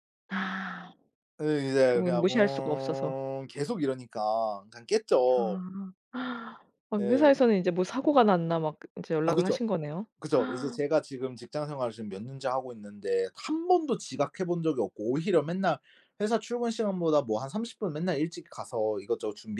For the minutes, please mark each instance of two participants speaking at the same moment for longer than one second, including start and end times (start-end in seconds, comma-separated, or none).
1.9-3.2